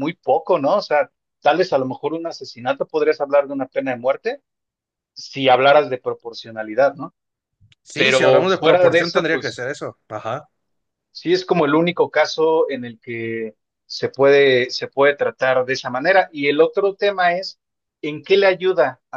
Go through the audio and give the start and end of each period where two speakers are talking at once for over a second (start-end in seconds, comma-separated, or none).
8.0-9.7